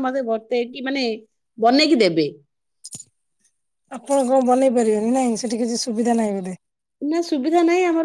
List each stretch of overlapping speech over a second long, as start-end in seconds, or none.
none